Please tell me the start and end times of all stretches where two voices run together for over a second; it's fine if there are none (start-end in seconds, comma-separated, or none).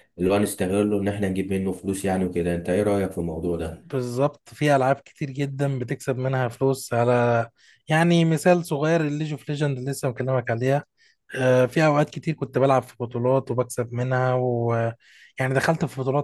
none